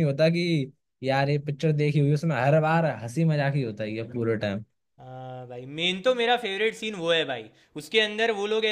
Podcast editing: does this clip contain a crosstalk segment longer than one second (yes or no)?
no